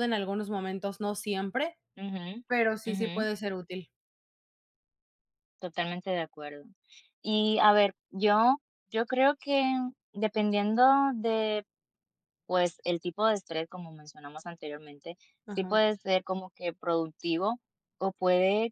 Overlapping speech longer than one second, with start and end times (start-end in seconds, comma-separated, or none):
none